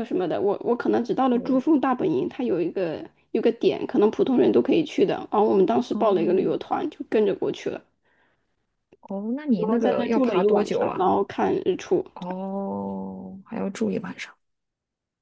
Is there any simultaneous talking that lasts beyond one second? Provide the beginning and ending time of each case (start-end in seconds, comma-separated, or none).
9.6-11.1